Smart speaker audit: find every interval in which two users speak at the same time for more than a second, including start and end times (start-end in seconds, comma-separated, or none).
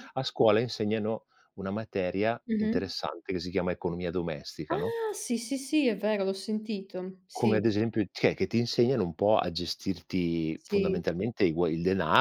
none